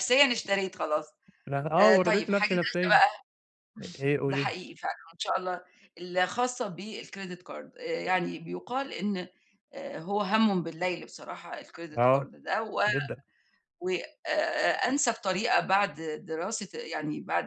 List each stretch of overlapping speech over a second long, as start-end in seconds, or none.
1.8-3.0